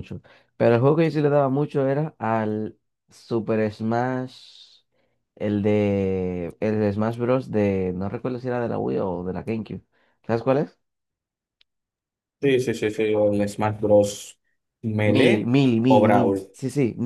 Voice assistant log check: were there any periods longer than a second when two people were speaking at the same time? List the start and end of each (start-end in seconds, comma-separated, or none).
15.0-16.4